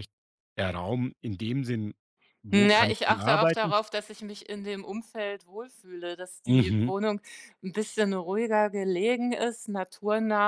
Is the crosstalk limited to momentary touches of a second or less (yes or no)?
no